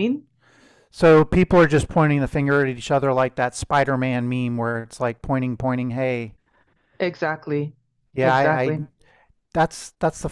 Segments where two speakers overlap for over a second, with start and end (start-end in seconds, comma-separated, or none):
none